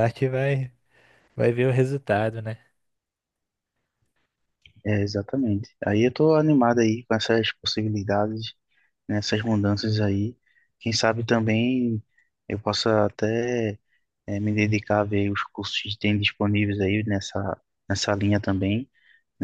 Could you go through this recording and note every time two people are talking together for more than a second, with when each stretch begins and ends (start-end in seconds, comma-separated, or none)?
none